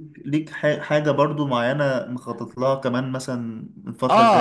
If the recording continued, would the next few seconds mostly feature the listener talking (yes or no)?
yes